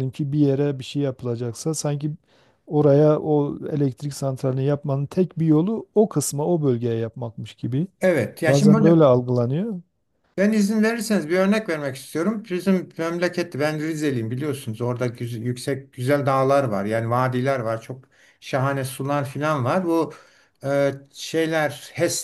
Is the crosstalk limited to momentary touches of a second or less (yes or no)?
yes